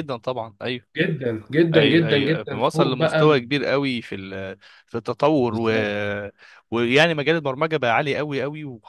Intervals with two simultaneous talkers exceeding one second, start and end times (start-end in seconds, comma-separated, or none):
1.8-3.5